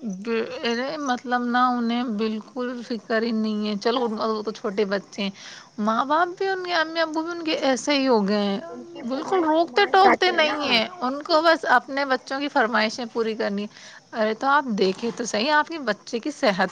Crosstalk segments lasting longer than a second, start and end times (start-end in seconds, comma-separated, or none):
9.1-11.1